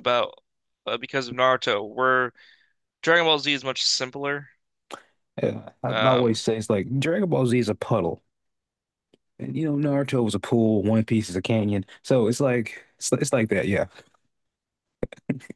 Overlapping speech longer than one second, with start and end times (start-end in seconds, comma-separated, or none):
none